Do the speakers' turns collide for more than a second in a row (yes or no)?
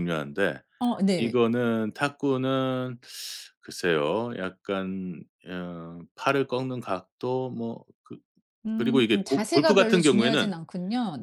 yes